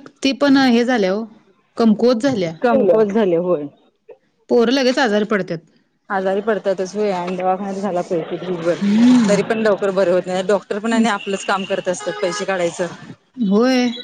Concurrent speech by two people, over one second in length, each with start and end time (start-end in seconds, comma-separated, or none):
none